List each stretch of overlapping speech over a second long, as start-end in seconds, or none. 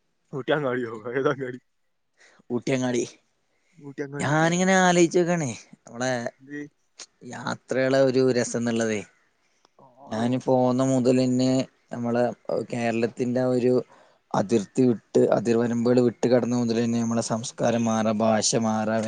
none